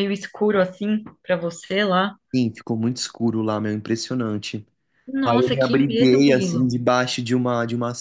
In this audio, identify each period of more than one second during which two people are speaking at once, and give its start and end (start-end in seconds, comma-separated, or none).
5.2-6.7